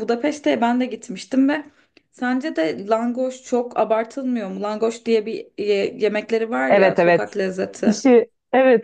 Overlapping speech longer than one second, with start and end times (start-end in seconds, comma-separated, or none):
none